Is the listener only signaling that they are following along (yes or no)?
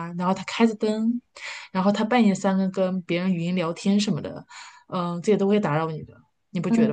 no